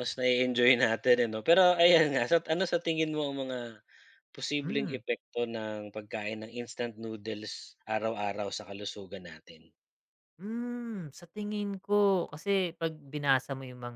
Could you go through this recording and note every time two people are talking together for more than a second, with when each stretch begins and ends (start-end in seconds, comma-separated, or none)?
none